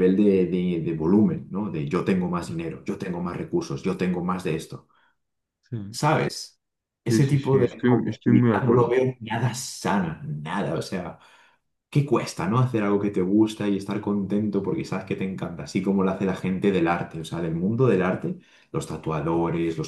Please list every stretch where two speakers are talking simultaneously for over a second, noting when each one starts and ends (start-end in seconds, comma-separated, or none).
7.1-9.0